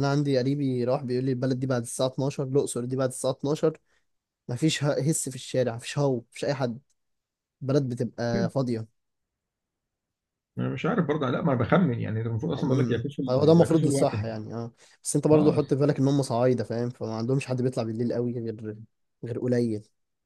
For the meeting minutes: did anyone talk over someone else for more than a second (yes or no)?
yes